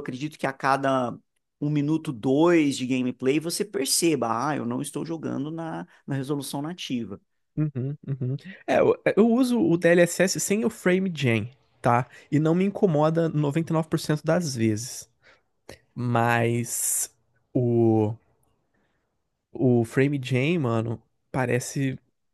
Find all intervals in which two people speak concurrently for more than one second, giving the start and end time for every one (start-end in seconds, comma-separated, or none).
none